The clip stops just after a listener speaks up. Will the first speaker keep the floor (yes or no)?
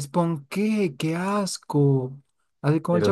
no